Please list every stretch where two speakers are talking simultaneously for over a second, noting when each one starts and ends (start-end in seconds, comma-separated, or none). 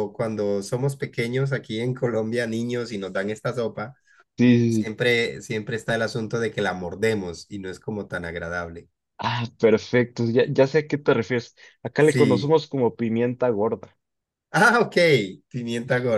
none